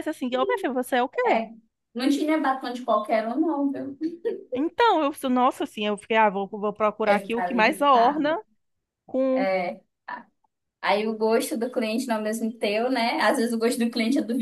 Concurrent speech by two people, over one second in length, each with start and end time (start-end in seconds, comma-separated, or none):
7.0-8.4